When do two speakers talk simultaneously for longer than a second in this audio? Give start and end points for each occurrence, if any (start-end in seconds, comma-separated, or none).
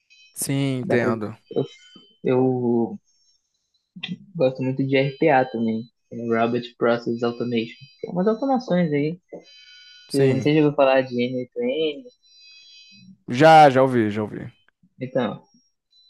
none